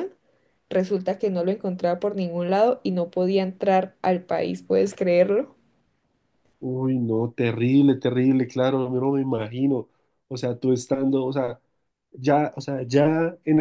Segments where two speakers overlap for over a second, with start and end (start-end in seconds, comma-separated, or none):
none